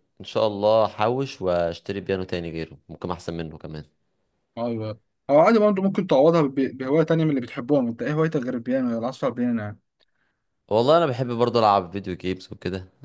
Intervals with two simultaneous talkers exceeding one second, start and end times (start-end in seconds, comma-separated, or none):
none